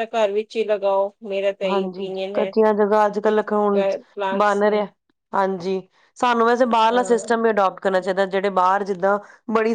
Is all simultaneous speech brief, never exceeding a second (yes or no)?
yes